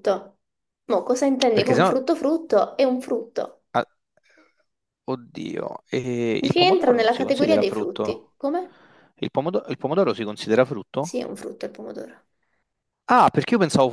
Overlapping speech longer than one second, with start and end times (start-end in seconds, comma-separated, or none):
6.4-8.3